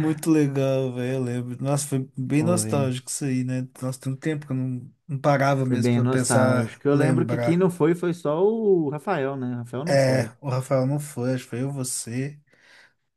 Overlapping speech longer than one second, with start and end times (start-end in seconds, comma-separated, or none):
5.6-7.7